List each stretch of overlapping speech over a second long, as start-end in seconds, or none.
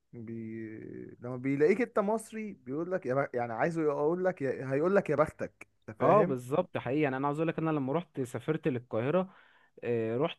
none